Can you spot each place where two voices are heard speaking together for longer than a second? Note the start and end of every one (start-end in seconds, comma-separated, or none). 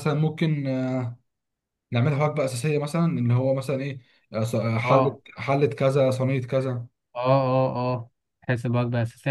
none